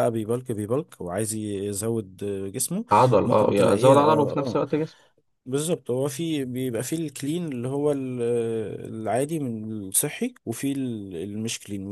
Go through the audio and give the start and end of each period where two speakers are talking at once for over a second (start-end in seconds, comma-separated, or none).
3.2-4.6